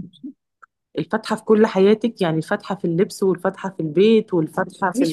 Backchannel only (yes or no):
no